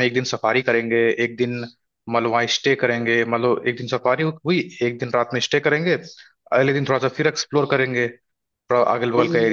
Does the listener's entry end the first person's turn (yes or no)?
yes